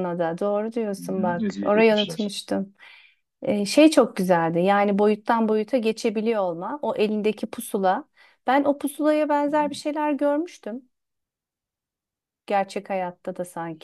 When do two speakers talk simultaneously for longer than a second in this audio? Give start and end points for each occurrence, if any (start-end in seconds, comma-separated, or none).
1.0-2.3